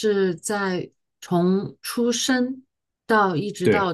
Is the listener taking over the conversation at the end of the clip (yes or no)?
no